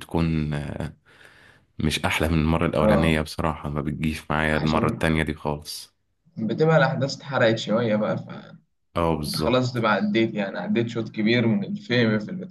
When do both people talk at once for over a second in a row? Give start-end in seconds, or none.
none